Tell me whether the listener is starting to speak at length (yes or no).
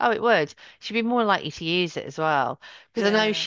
no